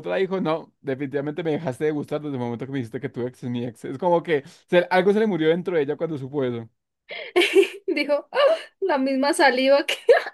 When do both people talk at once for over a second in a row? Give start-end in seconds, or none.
none